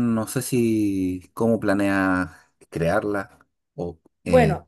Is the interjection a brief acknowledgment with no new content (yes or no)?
no